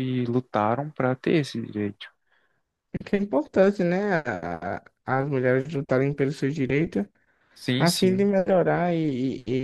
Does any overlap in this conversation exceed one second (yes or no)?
no